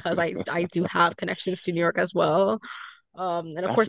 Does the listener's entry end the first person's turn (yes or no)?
no